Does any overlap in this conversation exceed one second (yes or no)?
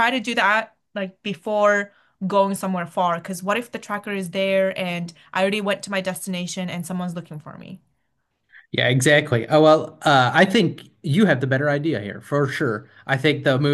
no